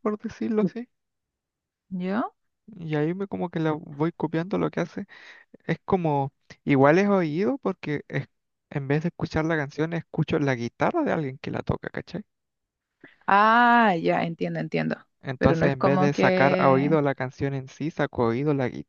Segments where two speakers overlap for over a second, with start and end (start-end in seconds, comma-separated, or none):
15.4-17.0